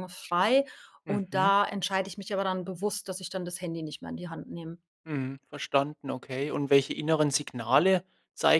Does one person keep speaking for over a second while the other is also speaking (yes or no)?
no